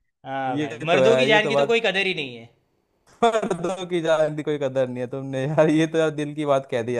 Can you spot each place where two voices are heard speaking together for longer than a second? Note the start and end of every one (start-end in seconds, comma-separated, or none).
0.6-1.8